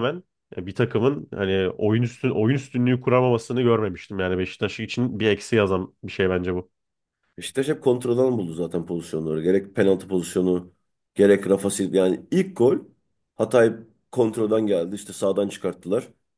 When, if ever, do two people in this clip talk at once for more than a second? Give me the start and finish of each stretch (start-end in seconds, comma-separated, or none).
none